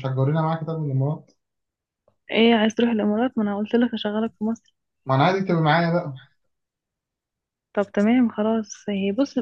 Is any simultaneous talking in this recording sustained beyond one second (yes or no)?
no